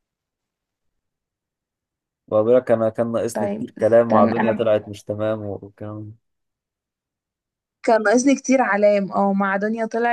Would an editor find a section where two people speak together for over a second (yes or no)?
yes